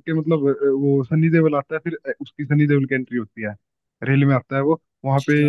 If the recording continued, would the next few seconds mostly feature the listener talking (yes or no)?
no